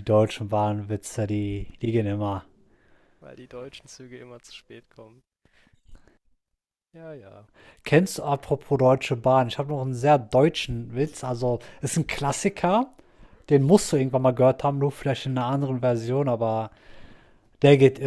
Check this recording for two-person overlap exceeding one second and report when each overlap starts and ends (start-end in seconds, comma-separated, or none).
none